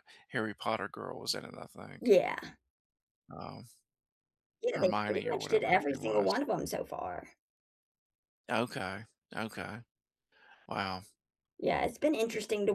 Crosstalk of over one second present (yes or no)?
yes